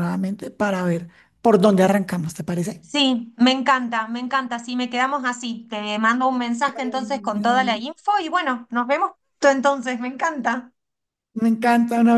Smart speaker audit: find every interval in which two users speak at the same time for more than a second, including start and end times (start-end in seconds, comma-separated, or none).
6.6-7.8